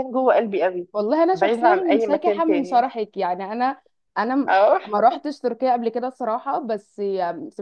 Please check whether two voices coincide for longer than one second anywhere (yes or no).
yes